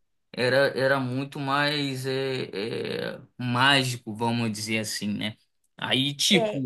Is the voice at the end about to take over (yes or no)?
no